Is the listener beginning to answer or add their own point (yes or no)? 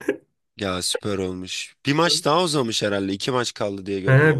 yes